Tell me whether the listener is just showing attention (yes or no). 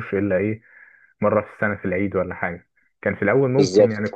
yes